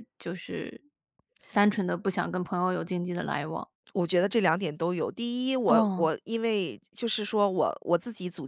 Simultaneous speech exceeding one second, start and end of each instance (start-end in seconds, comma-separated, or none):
none